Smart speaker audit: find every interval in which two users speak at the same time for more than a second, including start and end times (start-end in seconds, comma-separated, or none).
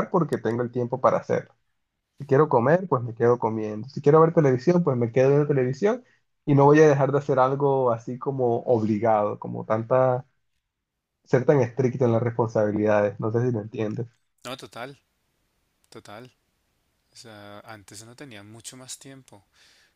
none